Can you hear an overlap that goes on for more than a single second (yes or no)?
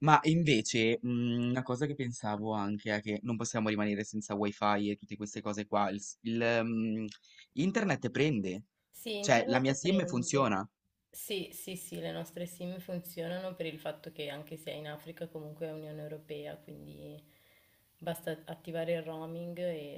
yes